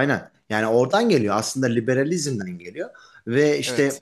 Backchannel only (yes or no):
yes